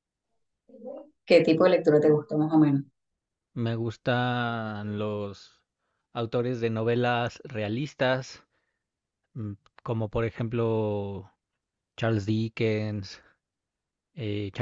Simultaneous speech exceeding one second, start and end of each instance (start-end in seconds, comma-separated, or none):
none